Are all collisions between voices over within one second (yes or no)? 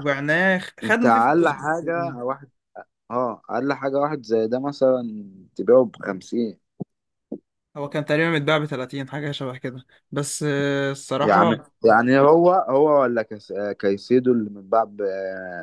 no